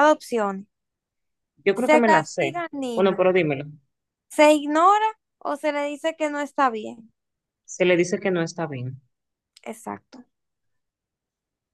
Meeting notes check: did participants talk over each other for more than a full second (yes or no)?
yes